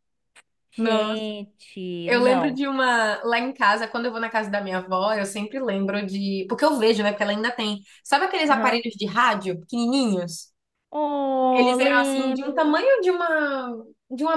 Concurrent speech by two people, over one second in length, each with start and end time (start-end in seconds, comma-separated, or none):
11.5-12.8